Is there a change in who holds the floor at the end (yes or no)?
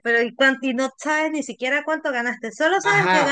yes